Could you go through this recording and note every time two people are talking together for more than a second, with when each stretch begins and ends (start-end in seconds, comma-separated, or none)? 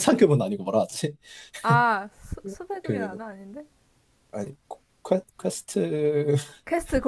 none